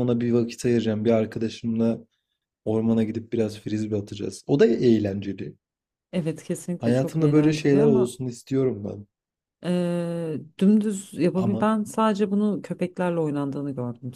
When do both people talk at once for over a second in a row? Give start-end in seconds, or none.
6.8-8.1